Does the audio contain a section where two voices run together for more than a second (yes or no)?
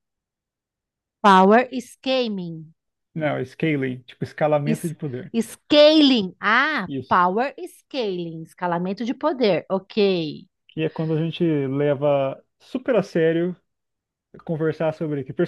no